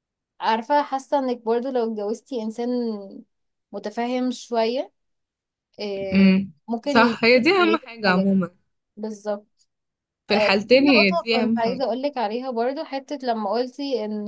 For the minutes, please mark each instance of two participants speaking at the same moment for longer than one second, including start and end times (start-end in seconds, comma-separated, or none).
6.1-8.3, 10.3-11.9